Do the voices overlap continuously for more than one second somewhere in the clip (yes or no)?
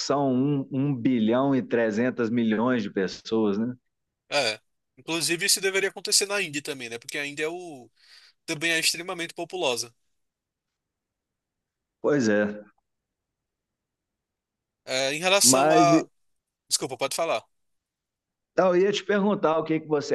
no